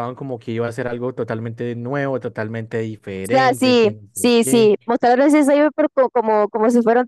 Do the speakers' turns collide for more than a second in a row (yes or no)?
yes